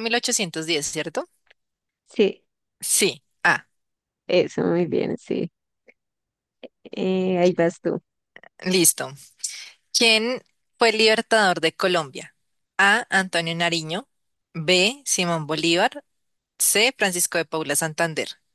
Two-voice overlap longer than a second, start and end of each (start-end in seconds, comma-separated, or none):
none